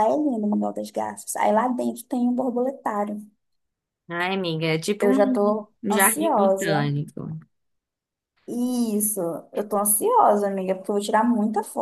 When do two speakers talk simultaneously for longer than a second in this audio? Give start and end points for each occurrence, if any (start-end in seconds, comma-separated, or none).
5.0-6.9